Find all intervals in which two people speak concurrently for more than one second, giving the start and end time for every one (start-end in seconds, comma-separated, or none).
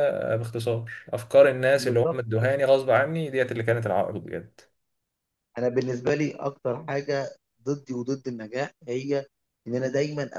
none